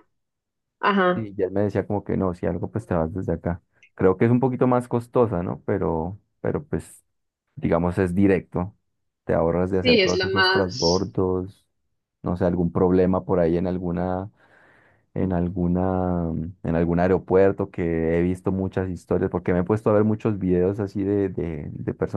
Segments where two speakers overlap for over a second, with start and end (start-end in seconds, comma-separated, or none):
9.8-11.1